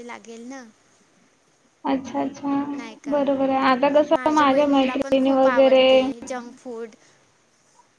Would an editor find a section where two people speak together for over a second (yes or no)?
yes